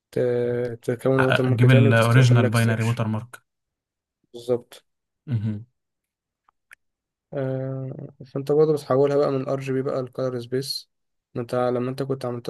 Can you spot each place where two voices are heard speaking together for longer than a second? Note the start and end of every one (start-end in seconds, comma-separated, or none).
1.2-3.0